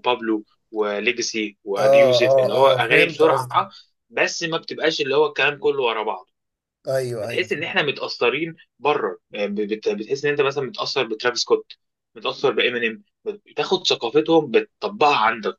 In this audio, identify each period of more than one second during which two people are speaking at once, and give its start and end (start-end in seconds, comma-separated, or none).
1.8-3.6